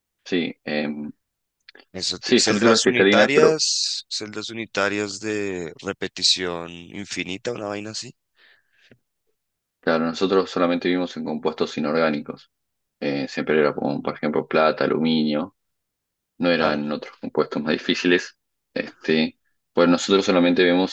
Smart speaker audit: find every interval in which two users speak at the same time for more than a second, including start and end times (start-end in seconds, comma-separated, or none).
2.2-3.6